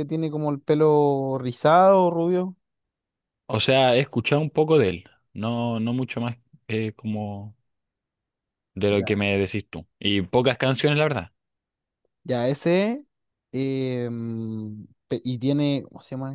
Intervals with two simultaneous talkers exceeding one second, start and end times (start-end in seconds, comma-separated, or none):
none